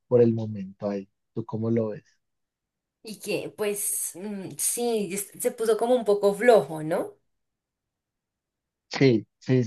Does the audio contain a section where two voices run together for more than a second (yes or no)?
no